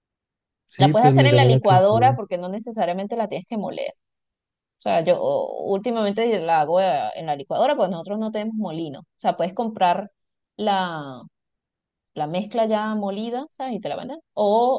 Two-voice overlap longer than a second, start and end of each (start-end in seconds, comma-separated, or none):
0.8-2.2